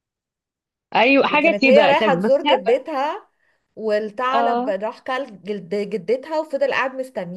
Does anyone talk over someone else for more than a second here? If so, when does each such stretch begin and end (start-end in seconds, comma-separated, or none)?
1.2-2.6